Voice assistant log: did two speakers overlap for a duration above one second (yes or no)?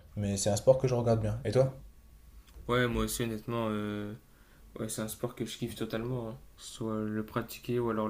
no